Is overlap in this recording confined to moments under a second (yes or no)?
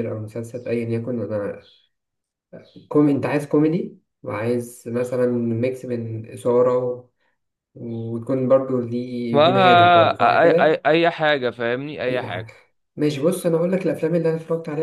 no